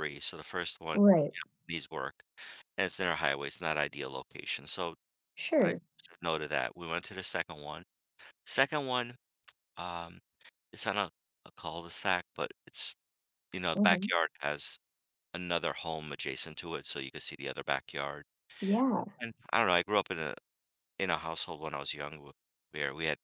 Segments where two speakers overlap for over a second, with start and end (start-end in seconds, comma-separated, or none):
none